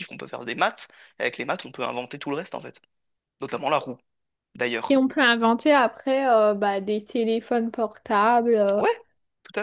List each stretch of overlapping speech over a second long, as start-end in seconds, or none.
none